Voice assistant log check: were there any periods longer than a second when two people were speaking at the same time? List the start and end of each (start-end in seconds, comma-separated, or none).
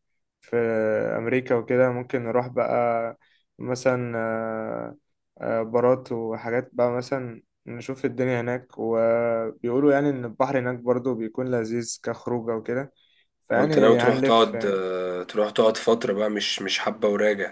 13.6-14.8